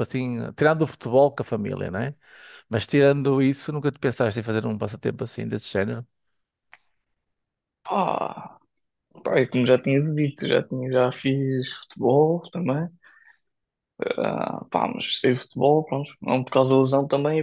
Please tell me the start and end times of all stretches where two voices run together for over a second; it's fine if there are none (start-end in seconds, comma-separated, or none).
none